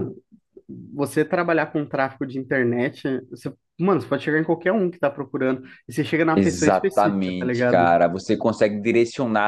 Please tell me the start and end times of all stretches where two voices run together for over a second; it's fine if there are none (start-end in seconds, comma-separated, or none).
6.3-7.9